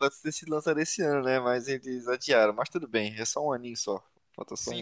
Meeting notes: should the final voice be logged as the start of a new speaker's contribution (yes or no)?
yes